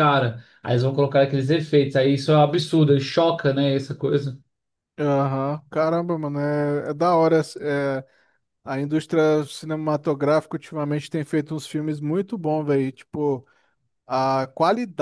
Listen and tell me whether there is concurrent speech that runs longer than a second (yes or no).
no